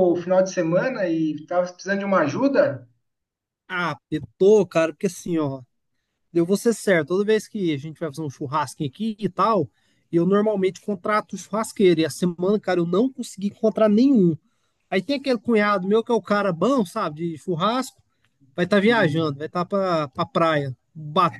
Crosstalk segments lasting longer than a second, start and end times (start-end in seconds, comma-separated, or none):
none